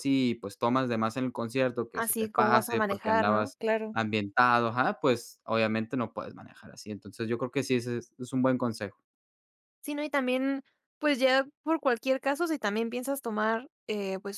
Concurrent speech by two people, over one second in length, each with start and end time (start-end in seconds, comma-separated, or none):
1.9-4.0